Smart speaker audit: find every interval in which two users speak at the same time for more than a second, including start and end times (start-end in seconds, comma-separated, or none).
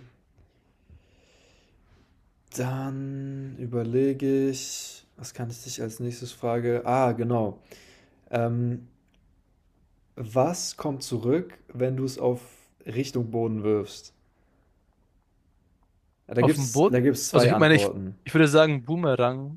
16.4-18.2